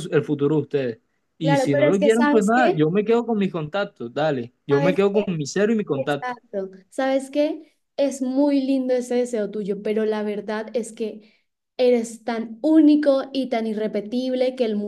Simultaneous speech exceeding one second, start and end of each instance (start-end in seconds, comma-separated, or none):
1.4-2.8